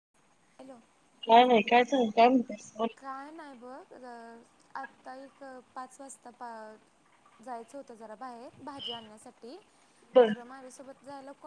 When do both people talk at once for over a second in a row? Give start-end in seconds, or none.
none